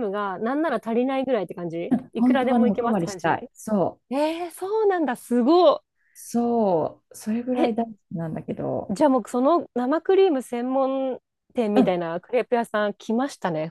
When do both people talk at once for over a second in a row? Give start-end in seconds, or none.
2.1-3.4